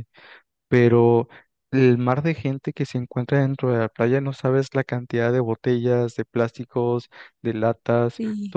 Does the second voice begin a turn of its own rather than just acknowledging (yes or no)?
no